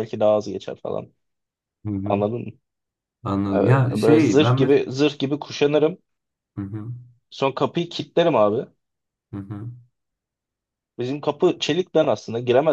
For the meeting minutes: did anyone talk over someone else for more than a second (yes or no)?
yes